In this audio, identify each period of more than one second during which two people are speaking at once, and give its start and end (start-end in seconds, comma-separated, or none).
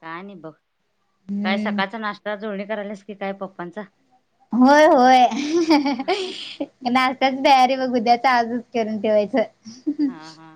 none